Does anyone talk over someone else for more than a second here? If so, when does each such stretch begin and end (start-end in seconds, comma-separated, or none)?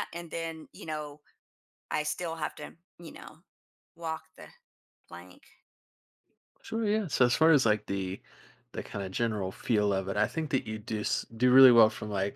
none